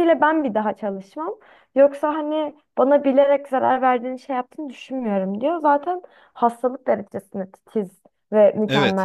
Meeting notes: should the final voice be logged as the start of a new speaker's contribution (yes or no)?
yes